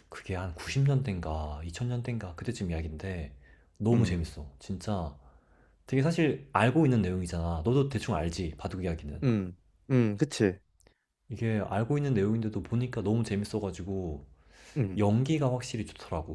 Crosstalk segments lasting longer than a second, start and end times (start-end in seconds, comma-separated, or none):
none